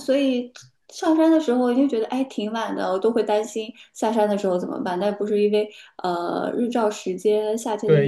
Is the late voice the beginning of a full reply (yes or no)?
yes